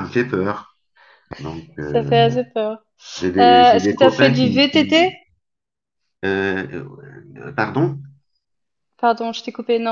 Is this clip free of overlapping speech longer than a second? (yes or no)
no